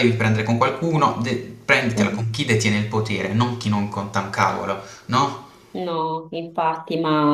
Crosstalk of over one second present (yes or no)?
no